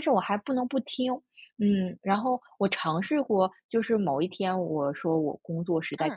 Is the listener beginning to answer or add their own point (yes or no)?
no